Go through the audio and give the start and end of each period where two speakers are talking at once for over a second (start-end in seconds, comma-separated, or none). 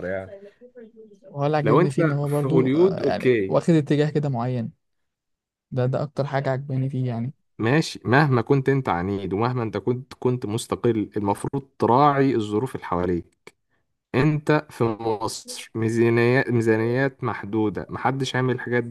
1.6-3.6